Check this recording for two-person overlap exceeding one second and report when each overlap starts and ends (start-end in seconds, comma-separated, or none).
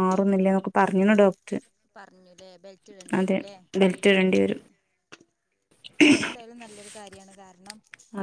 none